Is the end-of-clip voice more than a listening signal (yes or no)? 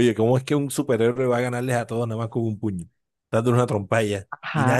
yes